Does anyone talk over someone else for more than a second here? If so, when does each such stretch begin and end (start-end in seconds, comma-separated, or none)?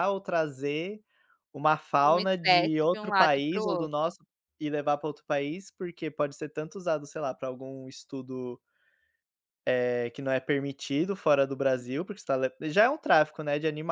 2.1-3.9